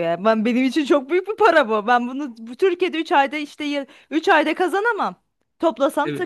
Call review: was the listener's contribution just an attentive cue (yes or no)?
yes